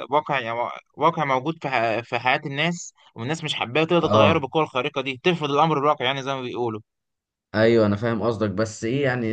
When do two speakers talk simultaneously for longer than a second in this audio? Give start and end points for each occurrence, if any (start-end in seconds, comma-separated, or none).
none